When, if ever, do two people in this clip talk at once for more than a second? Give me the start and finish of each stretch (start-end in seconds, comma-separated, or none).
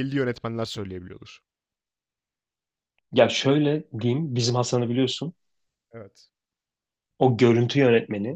none